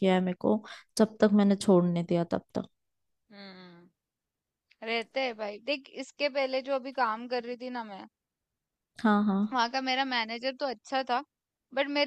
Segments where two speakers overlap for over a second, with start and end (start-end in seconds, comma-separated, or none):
none